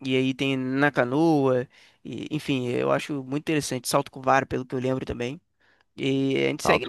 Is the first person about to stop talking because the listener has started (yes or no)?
yes